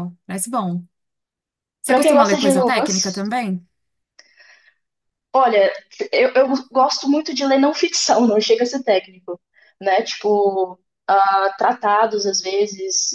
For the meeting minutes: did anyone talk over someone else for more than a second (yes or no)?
yes